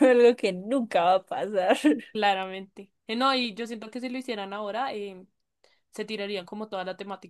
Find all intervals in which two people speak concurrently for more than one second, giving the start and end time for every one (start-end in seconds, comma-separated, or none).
none